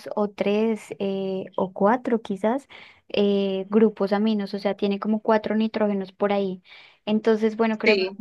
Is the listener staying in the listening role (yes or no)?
yes